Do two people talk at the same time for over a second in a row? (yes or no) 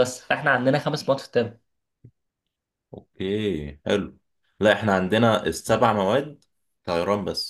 no